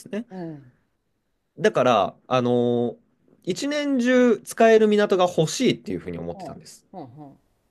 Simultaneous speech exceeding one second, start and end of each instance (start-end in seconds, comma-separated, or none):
none